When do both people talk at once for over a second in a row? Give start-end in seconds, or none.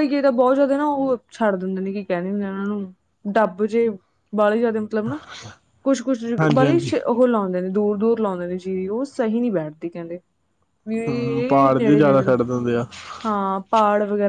11.1-12.3